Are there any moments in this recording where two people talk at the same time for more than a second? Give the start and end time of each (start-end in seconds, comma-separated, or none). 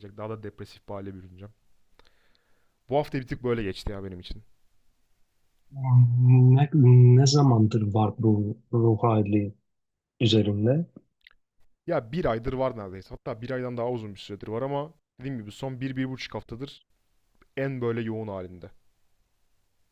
none